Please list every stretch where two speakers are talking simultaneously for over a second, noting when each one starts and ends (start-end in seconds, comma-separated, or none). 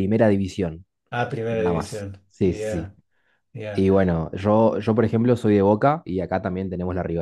1.5-2.9